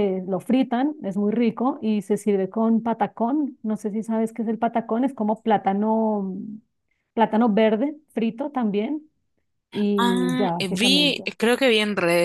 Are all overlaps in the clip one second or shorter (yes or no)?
no